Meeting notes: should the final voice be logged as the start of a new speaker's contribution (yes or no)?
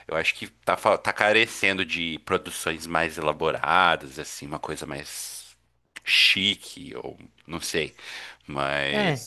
yes